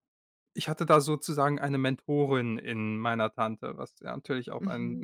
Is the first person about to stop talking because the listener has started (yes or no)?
yes